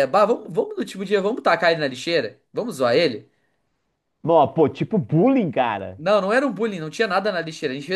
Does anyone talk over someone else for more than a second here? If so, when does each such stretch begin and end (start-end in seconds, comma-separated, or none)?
none